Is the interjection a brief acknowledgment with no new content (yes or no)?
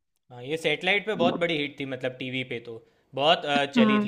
yes